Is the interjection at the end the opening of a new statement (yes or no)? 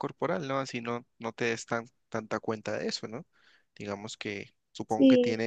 no